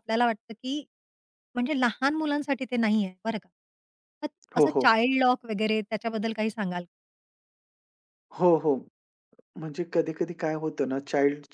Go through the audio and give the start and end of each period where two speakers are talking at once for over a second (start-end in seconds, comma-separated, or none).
none